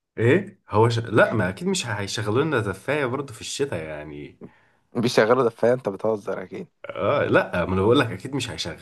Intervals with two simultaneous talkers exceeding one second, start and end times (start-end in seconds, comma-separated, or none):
none